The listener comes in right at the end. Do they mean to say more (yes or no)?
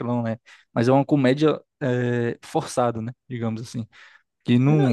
yes